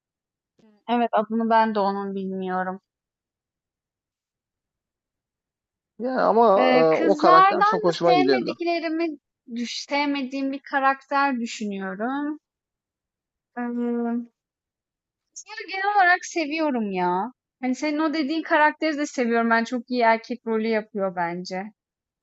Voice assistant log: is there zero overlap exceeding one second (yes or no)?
no